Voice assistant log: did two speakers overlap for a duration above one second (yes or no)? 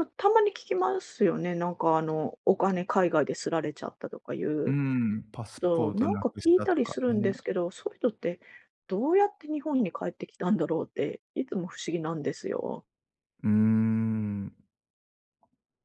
yes